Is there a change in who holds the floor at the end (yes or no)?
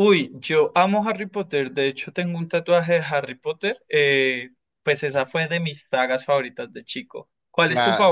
yes